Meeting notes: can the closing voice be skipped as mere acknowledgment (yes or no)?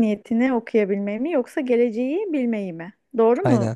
no